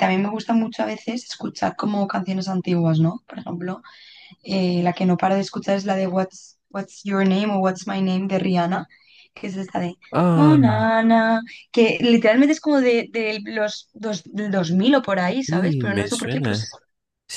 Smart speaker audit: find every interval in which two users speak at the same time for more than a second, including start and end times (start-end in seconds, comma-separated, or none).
15.5-16.7